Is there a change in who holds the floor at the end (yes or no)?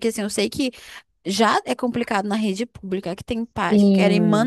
no